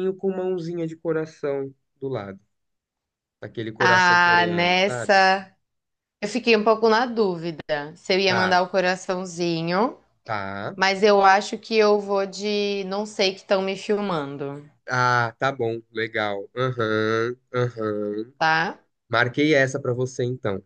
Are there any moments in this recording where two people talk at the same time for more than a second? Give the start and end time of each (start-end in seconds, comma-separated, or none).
3.8-5.1